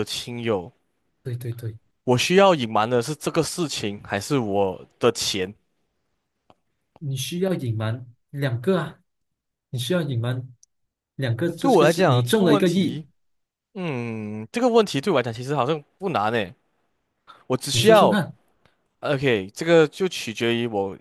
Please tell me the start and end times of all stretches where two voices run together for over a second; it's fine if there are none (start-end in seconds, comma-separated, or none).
11.6-13.0